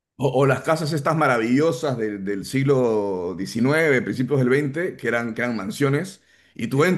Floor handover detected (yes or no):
no